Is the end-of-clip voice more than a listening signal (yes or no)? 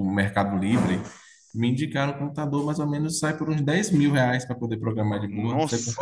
yes